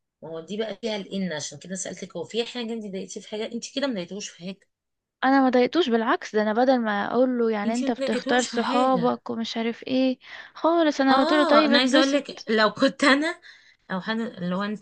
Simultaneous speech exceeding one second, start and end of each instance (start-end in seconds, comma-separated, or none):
7.7-9.2, 11.1-12.5